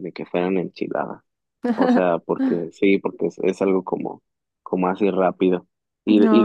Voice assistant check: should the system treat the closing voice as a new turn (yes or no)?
no